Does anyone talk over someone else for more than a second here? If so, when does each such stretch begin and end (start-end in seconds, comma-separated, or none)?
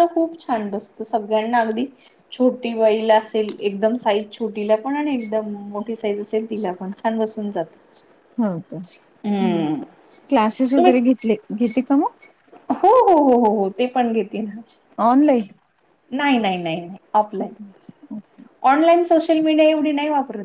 none